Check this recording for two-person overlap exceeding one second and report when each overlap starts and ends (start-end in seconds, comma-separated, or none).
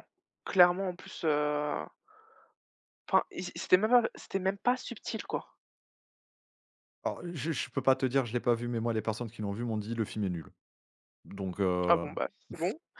none